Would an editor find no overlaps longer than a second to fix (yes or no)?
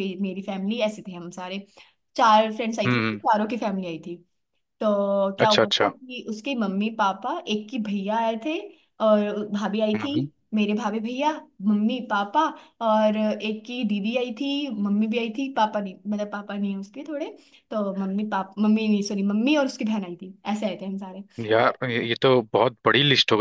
yes